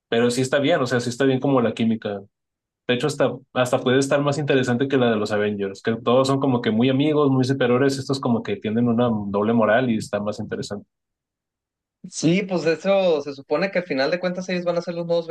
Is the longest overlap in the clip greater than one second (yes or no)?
no